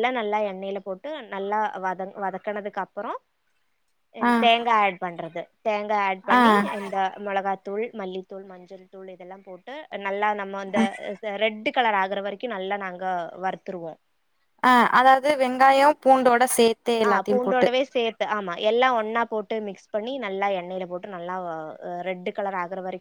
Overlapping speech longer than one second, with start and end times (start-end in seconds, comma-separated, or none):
none